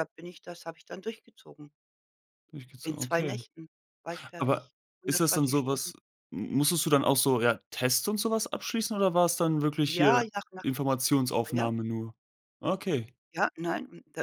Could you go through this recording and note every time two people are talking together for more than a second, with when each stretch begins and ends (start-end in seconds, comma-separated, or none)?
4.4-5.9